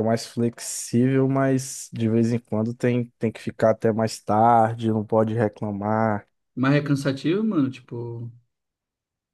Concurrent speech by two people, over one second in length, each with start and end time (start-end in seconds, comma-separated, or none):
none